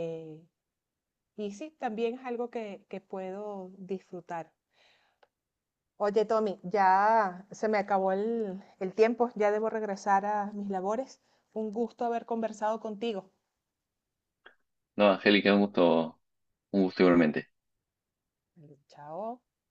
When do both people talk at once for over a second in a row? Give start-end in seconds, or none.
none